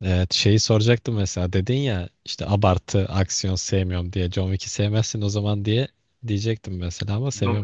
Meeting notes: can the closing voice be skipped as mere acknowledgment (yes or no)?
no